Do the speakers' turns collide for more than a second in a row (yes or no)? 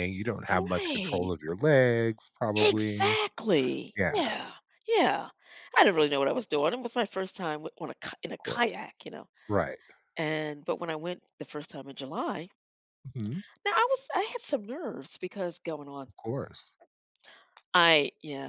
no